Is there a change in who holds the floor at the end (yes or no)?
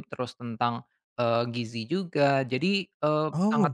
no